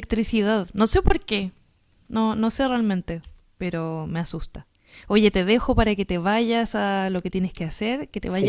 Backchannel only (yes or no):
no